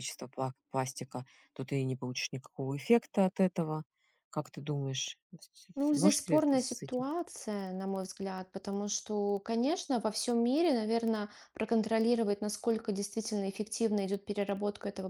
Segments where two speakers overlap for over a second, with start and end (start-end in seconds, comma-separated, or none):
5.8-7.1